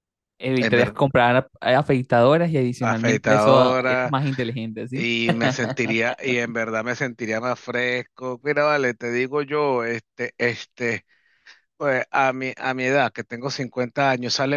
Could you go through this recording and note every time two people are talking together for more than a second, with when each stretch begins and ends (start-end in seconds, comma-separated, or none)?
2.8-4.2